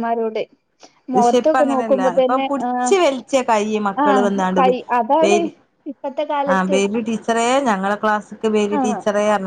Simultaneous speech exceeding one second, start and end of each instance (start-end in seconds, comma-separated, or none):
1.1-2.9